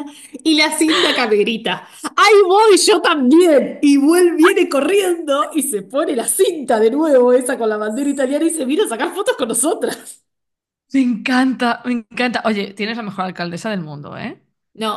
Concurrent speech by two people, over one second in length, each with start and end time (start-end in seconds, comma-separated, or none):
none